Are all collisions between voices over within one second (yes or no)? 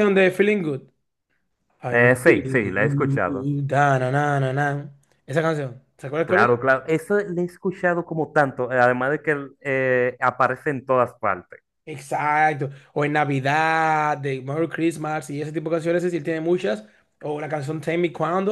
no